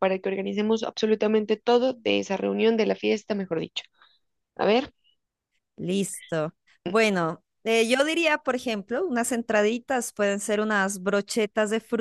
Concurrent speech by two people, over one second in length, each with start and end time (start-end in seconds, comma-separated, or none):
none